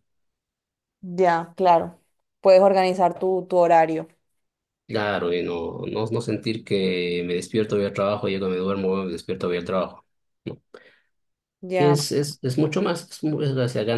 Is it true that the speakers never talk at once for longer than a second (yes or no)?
yes